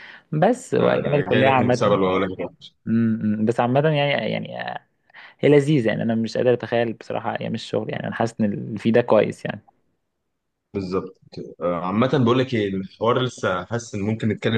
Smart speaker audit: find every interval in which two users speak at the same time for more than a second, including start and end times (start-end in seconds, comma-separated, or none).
0.8-2.0